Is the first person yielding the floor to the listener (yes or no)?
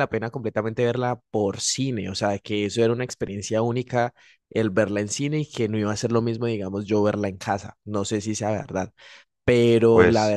no